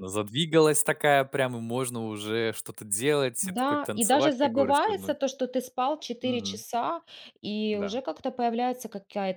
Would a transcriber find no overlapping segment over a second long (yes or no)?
no